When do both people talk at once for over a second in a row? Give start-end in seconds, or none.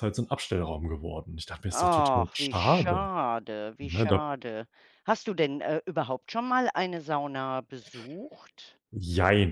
1.7-3.1